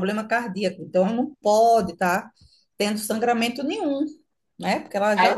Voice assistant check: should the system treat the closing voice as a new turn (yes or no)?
yes